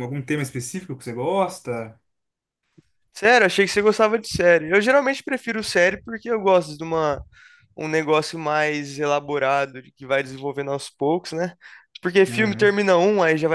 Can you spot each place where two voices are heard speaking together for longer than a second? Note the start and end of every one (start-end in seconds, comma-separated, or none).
none